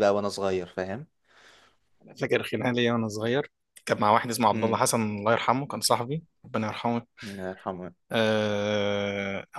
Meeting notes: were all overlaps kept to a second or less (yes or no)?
yes